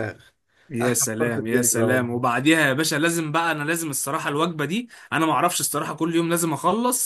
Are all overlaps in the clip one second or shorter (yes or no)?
no